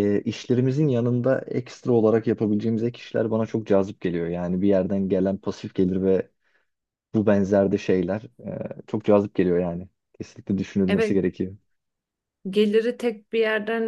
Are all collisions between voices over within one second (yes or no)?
yes